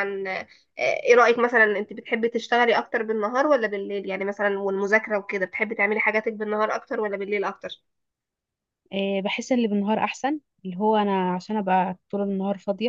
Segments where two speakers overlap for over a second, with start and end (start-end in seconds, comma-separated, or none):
none